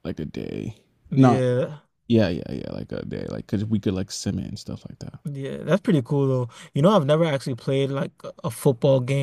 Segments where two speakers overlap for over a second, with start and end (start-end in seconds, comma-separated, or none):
none